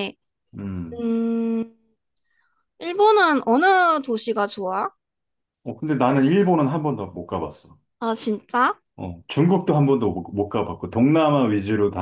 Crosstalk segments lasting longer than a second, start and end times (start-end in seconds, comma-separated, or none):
none